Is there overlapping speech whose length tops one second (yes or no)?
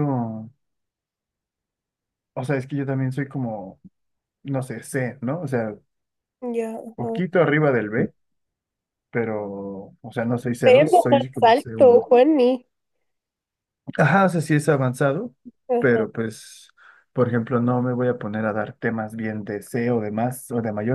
yes